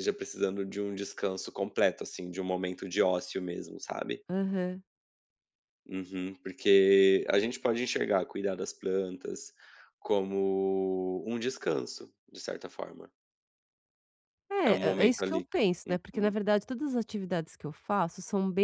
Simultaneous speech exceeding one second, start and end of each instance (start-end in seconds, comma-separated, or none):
14.7-16.3